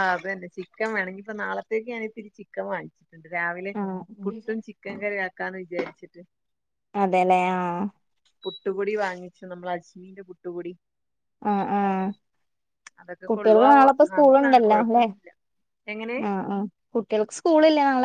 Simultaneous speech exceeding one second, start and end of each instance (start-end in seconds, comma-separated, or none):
13.3-15.0